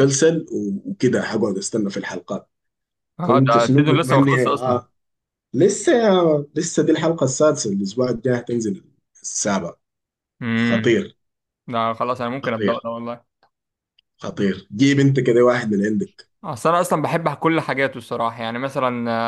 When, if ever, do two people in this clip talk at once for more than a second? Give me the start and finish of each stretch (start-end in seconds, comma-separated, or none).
3.2-4.8